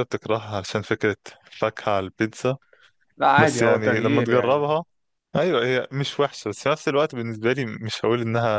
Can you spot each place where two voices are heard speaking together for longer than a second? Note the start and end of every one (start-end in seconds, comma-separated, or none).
3.4-4.8